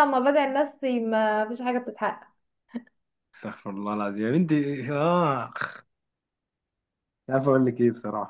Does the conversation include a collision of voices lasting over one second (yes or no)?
no